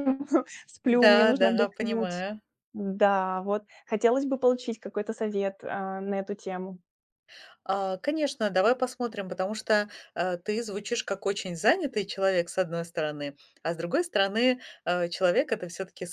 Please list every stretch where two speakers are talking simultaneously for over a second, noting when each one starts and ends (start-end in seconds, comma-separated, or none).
0.8-2.2